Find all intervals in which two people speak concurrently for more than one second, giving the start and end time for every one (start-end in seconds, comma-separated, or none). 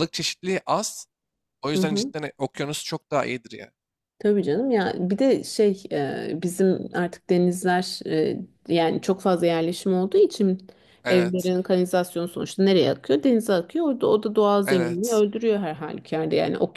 none